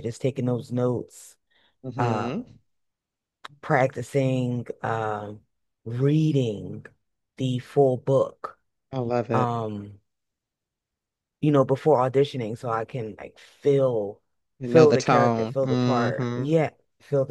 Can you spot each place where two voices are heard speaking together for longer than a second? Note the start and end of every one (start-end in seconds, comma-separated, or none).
14.6-16.4